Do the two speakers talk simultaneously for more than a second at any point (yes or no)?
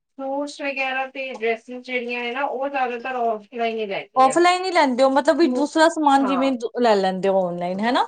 no